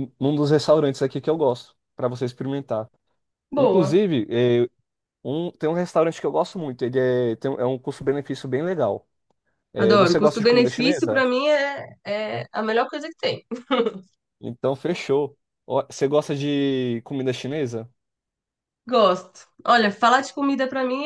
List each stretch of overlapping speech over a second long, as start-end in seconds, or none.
9.8-11.2